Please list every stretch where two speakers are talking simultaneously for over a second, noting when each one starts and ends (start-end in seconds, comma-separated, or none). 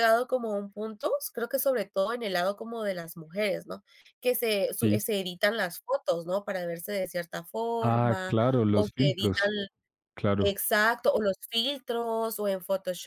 7.8-9.5